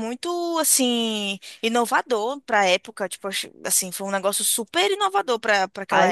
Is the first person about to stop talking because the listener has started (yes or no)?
yes